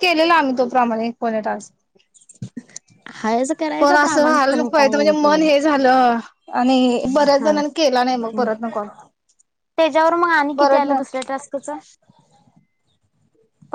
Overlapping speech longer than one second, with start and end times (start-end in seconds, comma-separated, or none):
3.8-5.5